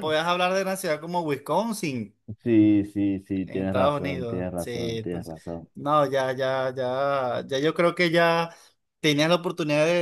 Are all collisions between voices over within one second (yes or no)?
no